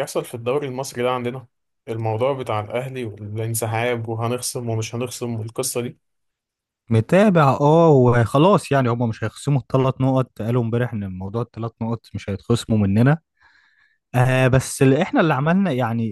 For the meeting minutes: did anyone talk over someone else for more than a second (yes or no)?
no